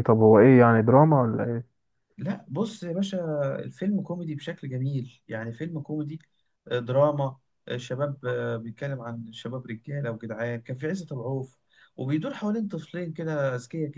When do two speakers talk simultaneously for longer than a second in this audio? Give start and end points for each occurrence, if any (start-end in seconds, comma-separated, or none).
none